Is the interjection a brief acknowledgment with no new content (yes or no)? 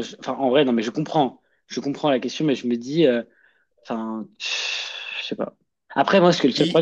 yes